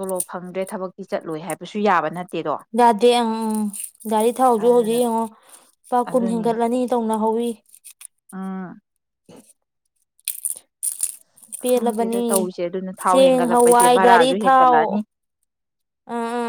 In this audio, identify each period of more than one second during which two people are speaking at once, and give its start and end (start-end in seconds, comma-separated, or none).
13.1-14.8